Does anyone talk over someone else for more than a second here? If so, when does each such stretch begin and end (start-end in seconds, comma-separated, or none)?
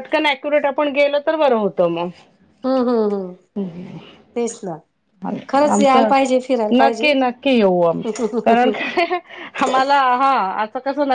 none